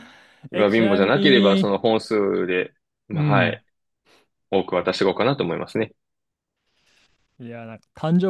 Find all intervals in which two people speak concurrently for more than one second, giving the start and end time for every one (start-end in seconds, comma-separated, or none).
0.5-1.8